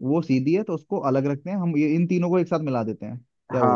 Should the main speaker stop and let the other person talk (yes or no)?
yes